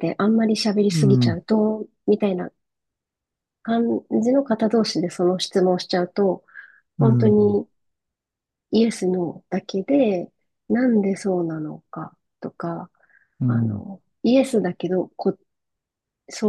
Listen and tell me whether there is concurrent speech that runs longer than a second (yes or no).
no